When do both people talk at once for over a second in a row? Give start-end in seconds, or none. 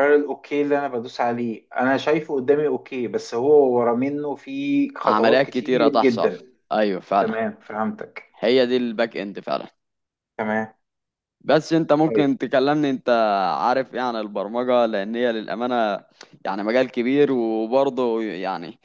5.0-6.3